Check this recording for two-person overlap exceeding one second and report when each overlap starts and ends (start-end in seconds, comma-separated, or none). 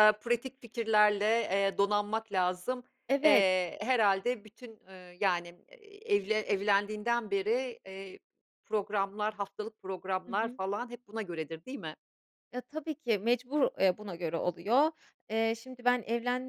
none